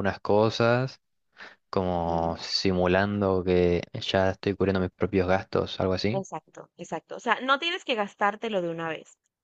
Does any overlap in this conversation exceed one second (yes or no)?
no